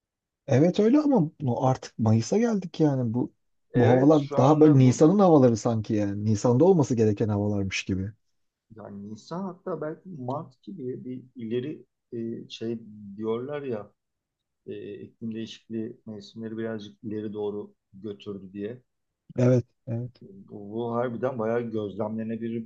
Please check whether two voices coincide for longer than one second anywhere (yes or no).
yes